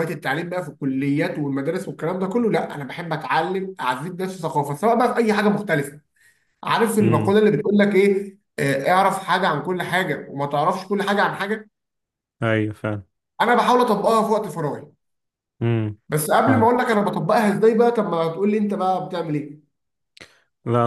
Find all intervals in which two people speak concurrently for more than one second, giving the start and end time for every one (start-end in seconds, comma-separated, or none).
none